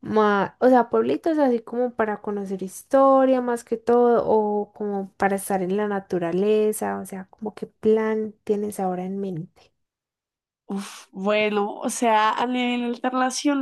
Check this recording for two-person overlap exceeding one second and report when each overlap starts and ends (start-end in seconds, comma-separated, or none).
none